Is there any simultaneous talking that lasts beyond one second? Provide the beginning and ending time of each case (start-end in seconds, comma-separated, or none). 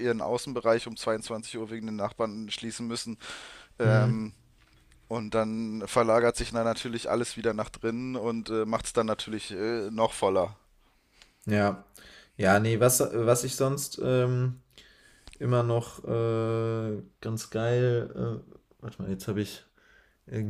none